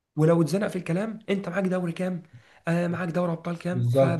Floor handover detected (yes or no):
yes